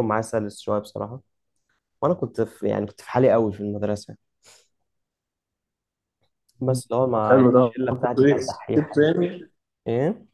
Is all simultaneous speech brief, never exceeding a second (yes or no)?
no